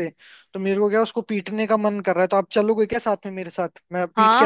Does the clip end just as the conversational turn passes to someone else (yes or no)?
yes